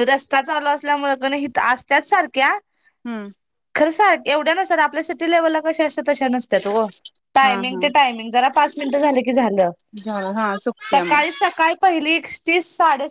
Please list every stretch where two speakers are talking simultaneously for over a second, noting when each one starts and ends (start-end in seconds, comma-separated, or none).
none